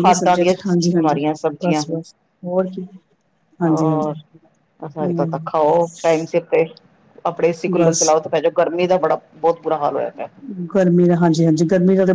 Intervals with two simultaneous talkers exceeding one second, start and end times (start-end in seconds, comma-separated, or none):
none